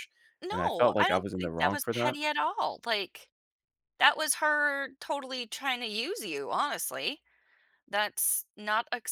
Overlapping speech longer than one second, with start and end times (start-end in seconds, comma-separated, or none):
0.5-2.2